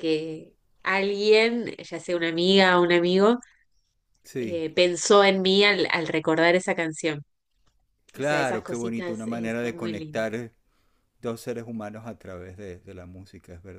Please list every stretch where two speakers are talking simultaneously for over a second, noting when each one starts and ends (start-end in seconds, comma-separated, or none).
8.2-10.3